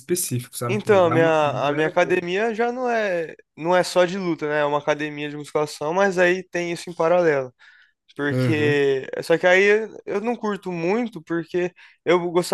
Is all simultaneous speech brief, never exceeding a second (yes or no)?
no